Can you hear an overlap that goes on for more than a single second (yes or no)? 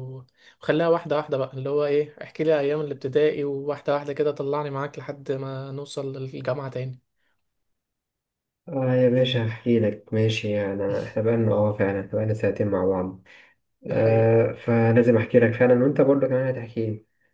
no